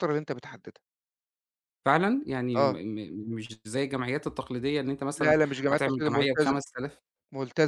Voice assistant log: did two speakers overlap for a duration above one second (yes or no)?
yes